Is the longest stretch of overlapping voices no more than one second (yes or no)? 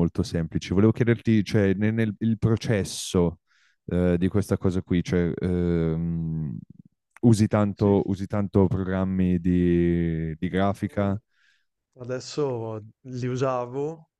yes